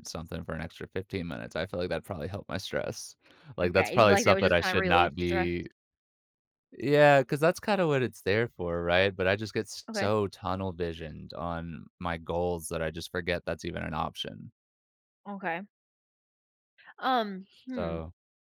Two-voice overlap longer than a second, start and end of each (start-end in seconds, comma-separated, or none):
3.6-5.5